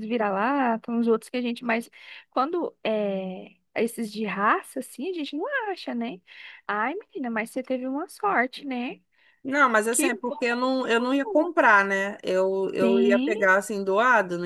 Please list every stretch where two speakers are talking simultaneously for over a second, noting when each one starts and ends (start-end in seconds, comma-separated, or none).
9.9-11.5